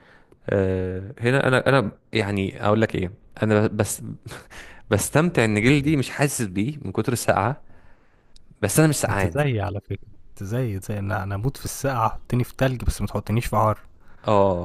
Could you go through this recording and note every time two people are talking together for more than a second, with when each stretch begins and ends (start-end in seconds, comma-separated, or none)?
none